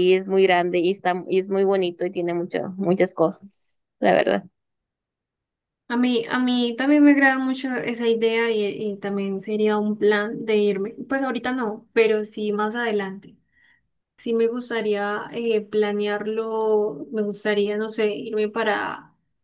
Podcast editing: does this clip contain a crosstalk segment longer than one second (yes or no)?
no